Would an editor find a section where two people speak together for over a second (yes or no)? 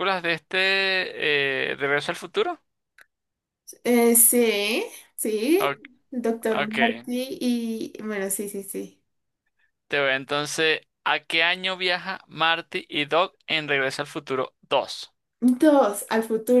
no